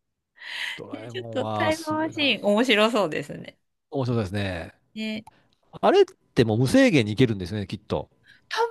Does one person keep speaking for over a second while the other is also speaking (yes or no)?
yes